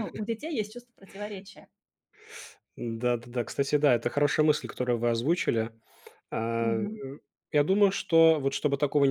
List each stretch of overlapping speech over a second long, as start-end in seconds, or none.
none